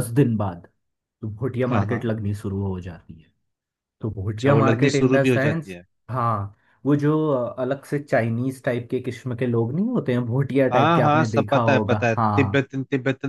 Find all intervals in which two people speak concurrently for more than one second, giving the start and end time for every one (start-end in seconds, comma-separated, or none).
4.3-5.8, 10.7-12.6